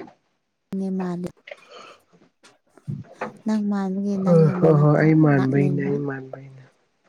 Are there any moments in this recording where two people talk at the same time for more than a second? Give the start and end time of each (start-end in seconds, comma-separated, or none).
4.2-5.9